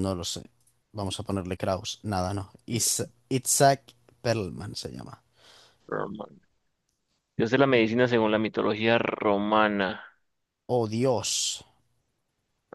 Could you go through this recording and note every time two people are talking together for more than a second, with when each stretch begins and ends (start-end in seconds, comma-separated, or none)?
none